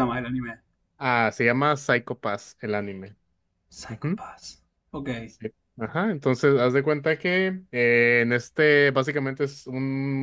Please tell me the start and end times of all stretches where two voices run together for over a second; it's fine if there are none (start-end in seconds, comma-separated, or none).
none